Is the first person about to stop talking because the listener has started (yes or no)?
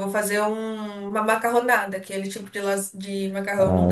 yes